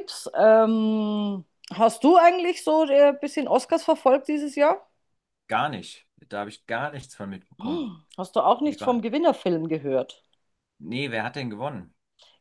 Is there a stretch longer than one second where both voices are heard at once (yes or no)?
no